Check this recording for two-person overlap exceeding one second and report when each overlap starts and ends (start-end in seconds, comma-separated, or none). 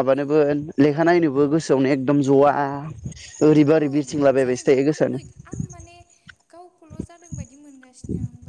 3.8-5.2